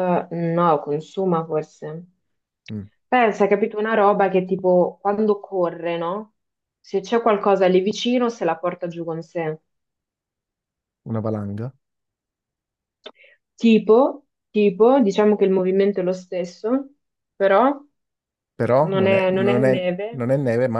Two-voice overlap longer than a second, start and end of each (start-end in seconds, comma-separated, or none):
18.8-20.2